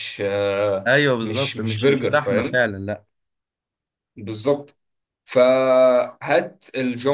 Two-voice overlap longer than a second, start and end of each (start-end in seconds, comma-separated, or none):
0.9-2.6